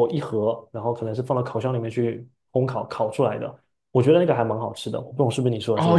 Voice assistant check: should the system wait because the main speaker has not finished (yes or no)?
no